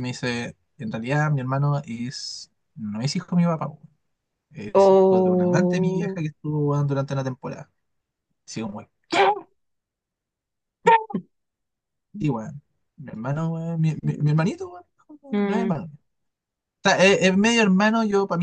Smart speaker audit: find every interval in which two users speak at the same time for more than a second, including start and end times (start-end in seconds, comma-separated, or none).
4.7-6.2